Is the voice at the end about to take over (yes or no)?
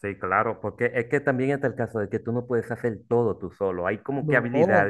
no